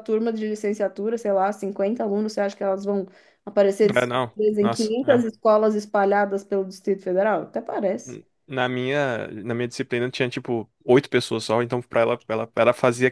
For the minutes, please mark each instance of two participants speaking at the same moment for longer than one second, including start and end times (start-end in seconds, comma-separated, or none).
3.9-5.3